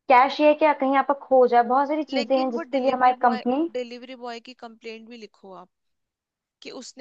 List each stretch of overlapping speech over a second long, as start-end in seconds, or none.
2.1-3.7